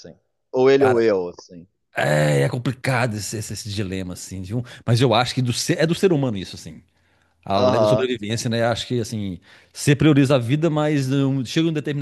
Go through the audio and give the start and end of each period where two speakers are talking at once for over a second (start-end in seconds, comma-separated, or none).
none